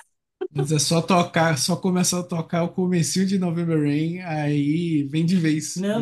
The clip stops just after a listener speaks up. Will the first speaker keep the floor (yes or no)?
no